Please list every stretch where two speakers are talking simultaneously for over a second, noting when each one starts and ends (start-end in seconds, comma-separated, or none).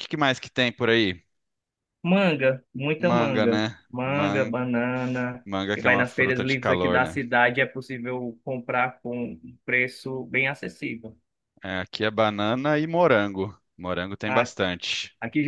3.0-4.5, 5.4-7.2